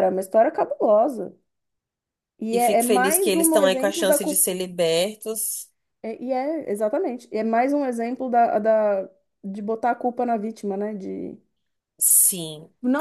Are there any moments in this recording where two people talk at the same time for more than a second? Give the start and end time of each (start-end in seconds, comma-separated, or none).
2.5-4.4